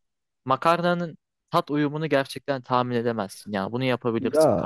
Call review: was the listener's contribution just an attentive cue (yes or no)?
no